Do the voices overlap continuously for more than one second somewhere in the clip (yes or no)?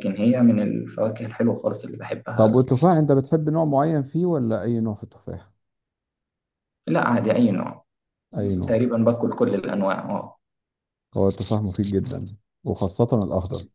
no